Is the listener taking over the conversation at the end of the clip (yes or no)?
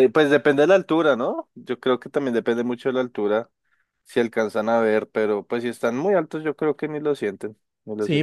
yes